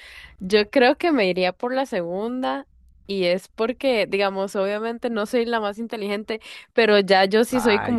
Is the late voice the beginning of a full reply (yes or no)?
no